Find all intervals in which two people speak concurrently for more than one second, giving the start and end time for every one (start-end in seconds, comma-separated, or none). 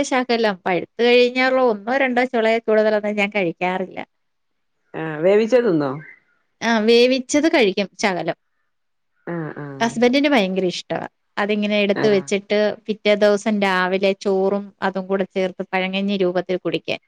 none